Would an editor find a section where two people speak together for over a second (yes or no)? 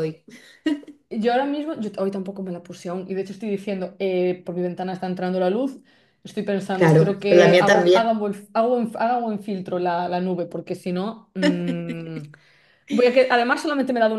yes